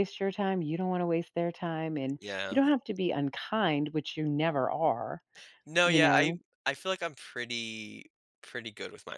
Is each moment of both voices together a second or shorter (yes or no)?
yes